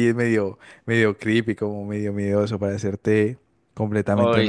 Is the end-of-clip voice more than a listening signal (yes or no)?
yes